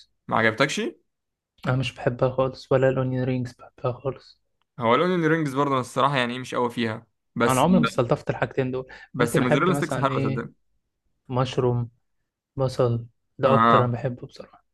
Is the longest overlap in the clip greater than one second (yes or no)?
yes